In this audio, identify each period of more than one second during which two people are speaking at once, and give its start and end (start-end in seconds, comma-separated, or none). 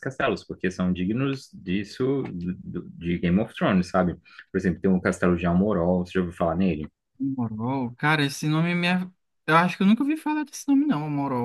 none